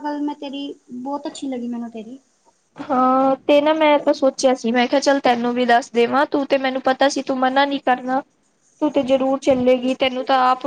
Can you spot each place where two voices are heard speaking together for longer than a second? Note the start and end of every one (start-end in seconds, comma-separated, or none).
none